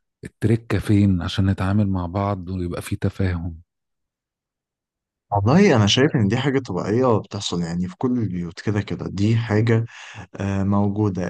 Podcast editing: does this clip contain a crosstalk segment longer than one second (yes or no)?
no